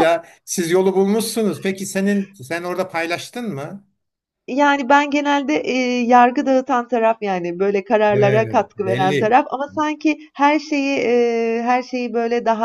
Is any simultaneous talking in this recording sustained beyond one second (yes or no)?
yes